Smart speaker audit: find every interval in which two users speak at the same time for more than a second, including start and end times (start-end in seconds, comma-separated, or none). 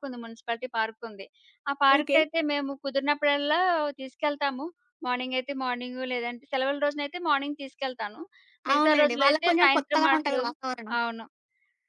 8.8-10.4